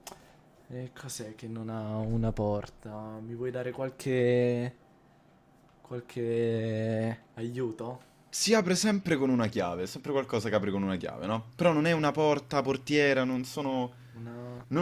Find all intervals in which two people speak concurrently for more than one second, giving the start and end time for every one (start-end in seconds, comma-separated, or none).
none